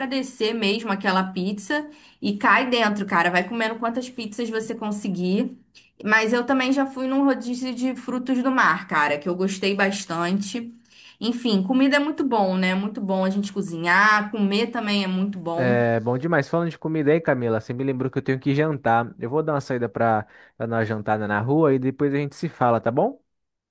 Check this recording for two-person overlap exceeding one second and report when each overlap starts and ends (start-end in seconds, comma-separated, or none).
none